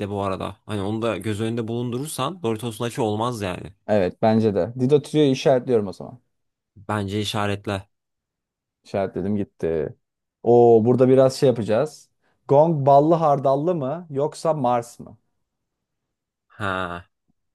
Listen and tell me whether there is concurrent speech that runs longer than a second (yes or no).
no